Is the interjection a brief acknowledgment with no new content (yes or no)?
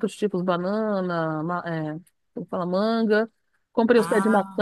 yes